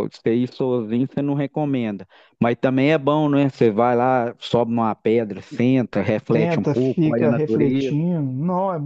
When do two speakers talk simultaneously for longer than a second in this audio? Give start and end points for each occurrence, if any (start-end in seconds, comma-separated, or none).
6.3-8.0